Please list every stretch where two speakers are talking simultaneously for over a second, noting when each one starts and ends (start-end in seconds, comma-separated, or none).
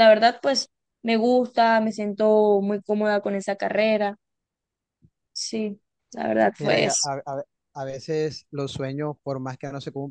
none